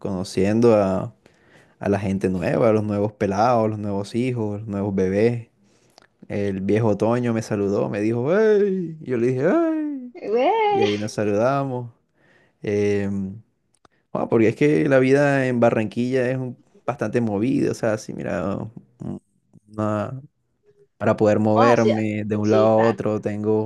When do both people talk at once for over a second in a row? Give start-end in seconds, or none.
21.5-23.0